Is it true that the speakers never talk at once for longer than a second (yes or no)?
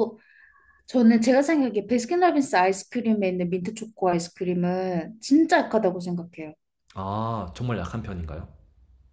yes